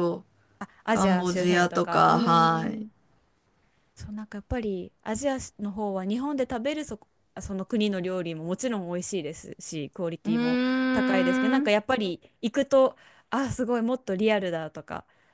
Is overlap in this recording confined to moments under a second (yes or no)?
no